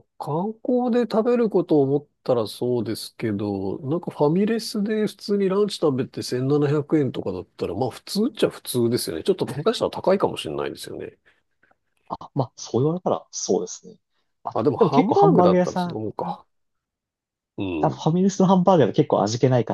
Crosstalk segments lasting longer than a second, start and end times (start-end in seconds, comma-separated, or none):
14.5-16.0